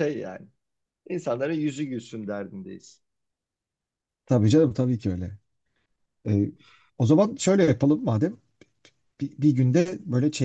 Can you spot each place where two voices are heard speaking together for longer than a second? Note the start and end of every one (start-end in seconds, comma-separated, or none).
none